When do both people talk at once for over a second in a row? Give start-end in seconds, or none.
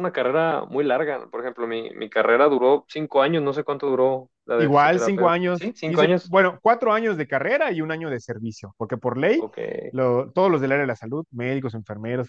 4.6-6.3